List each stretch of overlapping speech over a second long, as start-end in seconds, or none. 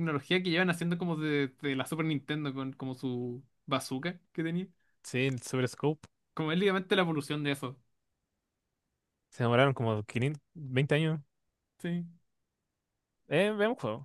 none